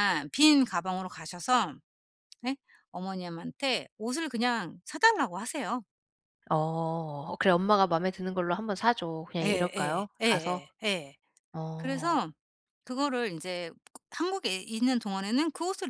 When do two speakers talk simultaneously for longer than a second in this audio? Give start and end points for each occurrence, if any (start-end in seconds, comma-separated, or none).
9.4-10.7